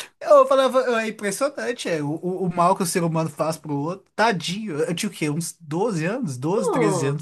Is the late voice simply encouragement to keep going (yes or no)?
yes